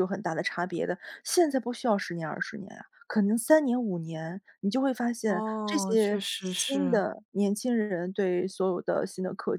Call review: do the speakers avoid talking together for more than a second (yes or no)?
no